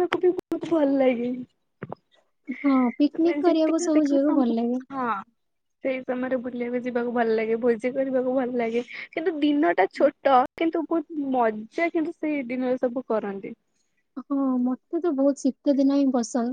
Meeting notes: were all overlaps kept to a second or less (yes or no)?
no